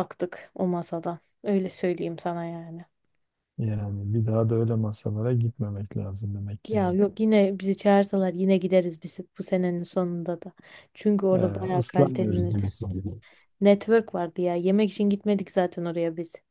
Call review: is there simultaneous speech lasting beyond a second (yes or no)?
yes